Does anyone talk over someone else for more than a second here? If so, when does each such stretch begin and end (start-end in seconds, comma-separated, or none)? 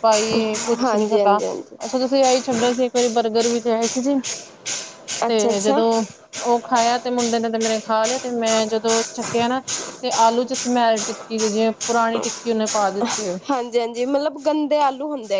none